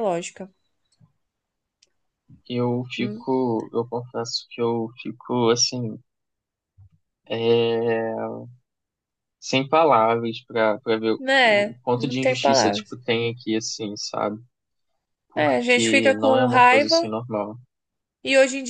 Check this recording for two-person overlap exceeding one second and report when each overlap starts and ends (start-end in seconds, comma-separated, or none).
11.2-13.0, 15.4-17.1